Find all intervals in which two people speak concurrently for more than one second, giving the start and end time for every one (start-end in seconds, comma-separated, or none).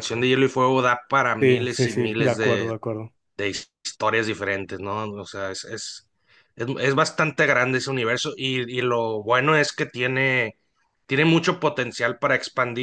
1.4-2.7